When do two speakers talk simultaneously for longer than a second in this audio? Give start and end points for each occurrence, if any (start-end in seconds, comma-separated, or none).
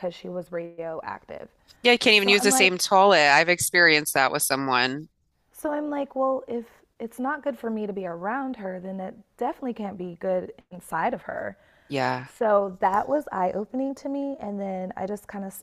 none